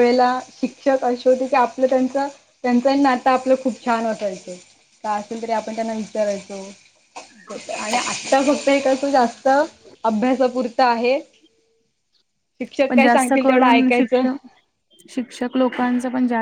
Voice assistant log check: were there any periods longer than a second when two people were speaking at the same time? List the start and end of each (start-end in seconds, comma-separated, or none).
12.9-14.2